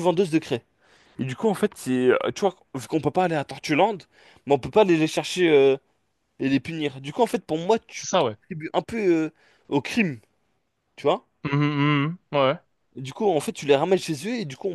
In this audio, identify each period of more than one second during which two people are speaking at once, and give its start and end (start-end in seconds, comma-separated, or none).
none